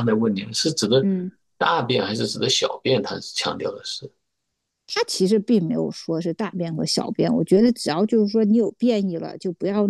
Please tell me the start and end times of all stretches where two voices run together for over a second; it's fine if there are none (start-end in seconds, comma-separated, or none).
none